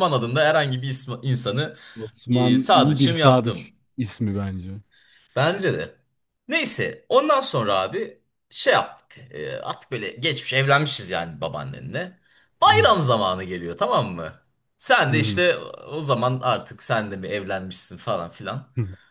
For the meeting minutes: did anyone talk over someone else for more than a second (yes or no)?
yes